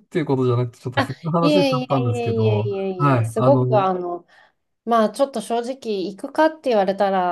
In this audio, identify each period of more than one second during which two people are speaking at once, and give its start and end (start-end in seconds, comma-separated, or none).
0.9-3.9